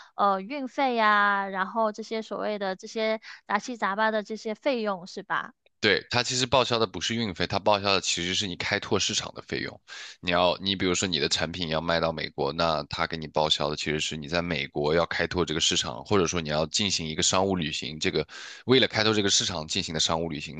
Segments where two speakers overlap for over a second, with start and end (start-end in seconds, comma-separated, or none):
none